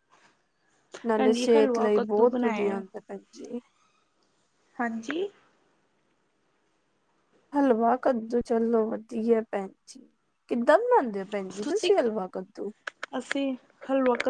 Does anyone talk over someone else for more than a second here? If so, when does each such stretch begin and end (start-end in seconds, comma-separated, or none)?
1.2-2.8